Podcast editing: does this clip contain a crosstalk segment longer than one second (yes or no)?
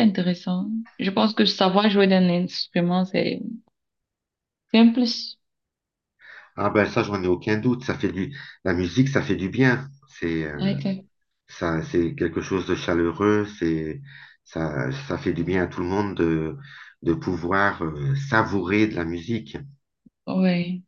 no